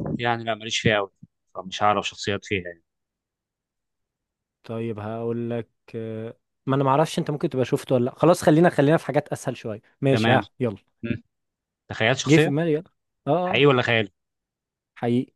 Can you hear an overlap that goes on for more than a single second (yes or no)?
no